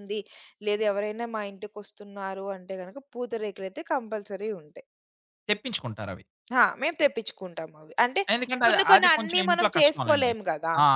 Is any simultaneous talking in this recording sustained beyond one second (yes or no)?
yes